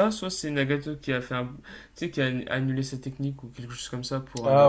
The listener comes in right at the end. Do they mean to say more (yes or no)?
yes